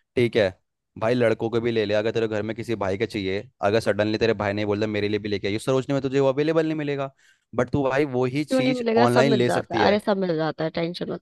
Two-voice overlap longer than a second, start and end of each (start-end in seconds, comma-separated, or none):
8.5-9.9